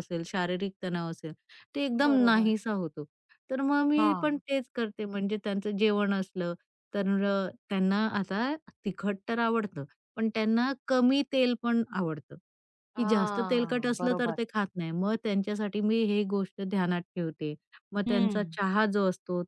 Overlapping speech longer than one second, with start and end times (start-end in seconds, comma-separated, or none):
13.0-14.4